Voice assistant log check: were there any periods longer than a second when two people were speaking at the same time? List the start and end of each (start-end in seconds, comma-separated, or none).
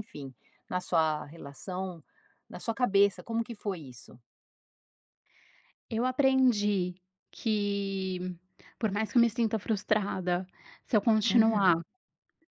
none